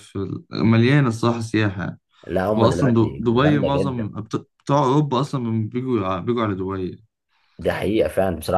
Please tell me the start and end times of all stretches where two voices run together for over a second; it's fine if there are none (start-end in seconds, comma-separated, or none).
2.6-4.1